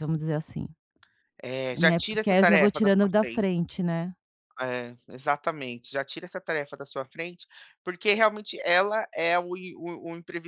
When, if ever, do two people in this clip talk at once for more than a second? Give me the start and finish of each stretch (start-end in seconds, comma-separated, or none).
1.7-3.5